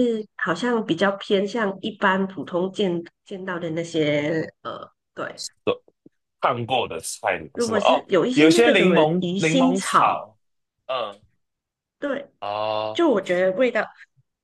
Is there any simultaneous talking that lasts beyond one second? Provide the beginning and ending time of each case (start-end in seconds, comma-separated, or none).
7.5-10.2